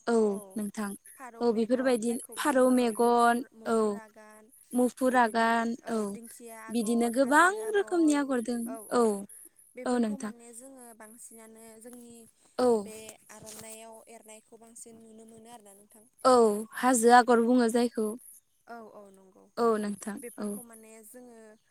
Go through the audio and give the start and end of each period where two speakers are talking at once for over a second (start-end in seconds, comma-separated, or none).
1.4-3.4